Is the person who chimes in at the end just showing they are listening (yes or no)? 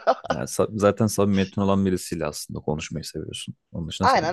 no